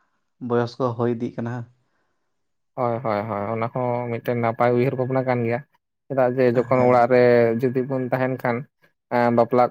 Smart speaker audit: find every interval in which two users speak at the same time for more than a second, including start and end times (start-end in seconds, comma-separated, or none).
none